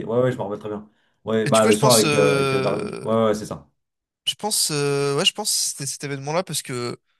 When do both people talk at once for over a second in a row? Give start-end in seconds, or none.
1.5-3.1